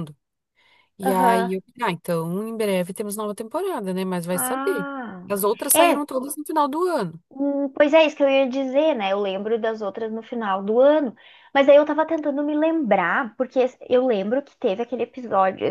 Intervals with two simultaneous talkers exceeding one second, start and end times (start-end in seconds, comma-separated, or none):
none